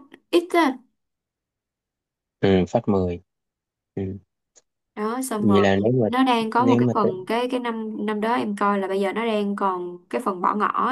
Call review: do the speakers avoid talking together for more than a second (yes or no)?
yes